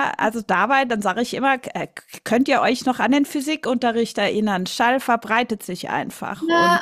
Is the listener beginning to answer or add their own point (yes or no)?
yes